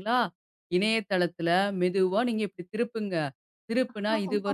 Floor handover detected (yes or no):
no